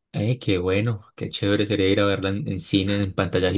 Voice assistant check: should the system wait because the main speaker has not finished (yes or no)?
no